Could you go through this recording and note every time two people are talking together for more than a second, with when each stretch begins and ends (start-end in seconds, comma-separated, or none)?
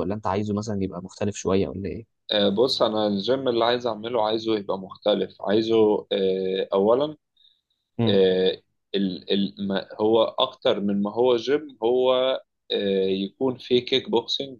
none